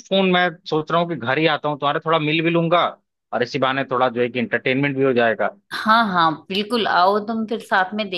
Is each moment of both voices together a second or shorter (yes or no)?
yes